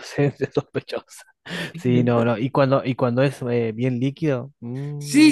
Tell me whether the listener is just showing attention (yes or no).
no